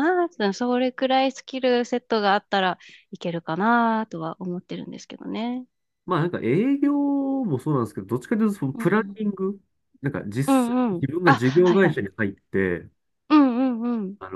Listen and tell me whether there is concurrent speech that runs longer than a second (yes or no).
yes